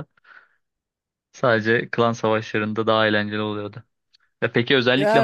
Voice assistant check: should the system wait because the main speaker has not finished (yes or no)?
yes